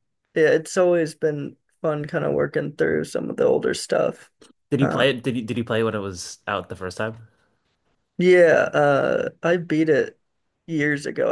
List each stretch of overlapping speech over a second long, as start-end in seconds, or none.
none